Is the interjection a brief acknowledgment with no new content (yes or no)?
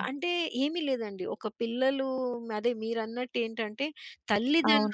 yes